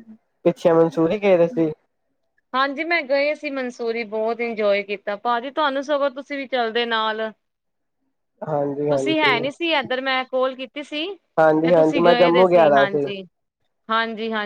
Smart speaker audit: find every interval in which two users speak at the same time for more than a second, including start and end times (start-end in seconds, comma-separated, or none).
11.6-12.8